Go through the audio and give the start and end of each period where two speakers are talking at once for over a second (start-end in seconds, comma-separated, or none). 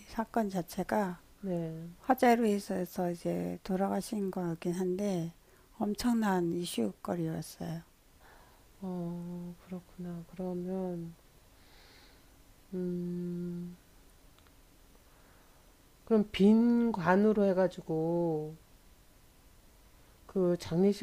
none